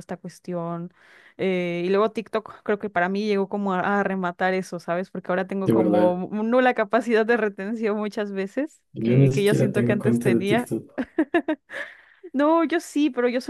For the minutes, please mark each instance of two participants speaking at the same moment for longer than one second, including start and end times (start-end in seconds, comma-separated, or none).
8.9-10.7